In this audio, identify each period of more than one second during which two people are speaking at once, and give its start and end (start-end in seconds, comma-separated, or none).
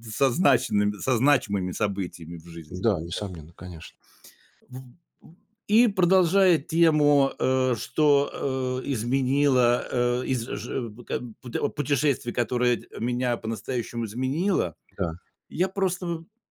none